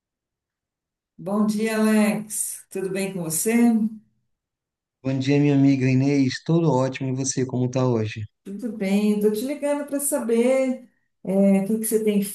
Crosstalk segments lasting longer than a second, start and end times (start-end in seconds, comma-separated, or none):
none